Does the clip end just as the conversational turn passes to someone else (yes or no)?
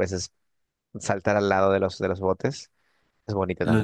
yes